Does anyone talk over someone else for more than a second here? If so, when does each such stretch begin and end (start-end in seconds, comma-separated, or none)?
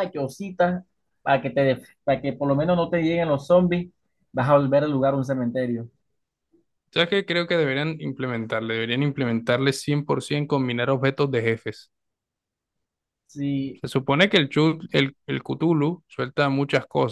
none